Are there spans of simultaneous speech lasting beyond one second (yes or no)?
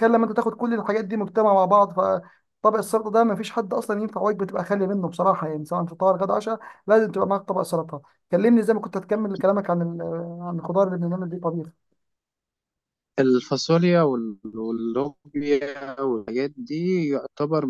no